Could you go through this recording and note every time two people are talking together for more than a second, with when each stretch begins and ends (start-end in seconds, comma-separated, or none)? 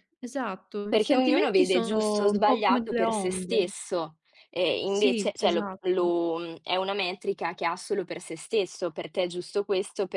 0.9-3.7, 4.8-6.1